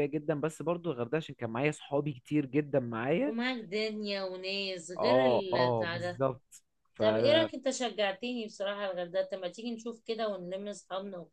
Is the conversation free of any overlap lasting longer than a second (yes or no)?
no